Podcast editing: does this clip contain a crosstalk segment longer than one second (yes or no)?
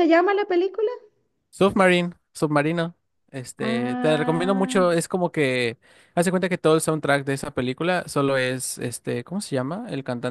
yes